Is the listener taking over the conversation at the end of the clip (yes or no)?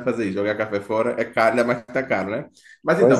no